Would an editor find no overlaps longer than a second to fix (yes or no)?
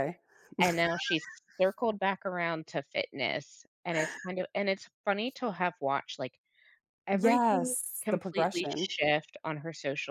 no